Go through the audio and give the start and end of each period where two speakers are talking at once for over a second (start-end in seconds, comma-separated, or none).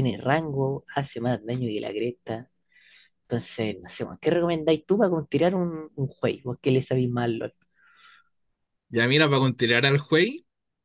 none